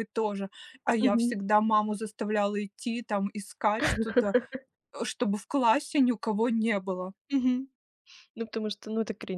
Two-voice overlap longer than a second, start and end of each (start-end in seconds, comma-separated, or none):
none